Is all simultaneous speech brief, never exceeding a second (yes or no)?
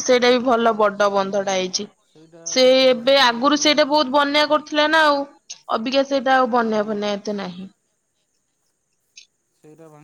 no